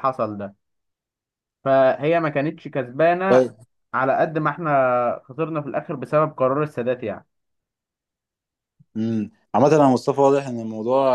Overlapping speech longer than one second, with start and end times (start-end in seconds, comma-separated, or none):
none